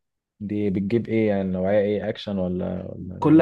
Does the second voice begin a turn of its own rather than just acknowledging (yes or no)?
yes